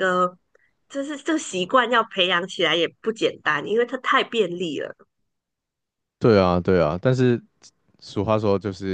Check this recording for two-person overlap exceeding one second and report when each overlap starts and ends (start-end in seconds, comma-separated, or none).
none